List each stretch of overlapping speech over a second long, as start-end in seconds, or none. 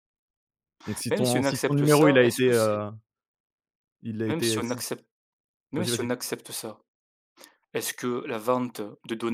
1.1-2.8